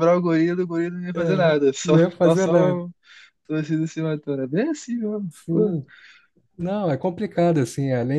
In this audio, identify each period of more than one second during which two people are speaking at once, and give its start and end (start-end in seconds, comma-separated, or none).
1.1-2.8